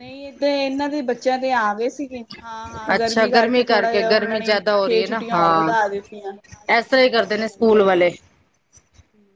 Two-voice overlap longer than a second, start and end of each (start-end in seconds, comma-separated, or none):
4.1-5.7